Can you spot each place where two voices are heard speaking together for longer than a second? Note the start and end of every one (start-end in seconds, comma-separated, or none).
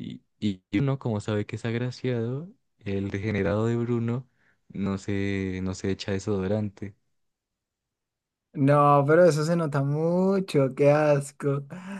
none